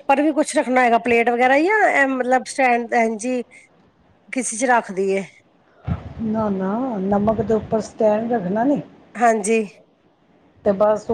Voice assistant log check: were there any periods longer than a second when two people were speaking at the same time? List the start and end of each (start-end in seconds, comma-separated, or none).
none